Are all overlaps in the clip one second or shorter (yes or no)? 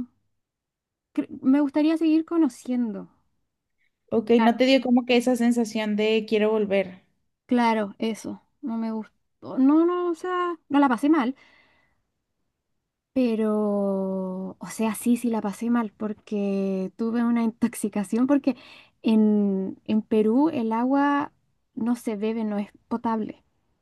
yes